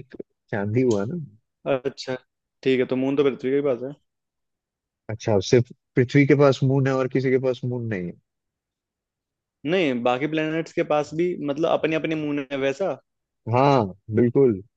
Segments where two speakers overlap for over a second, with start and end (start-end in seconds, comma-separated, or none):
none